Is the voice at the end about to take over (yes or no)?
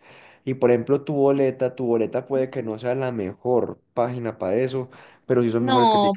yes